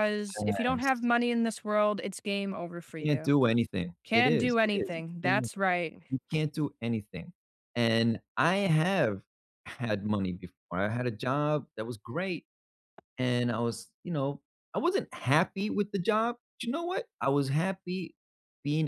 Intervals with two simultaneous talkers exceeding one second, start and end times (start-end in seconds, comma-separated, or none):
4.0-5.5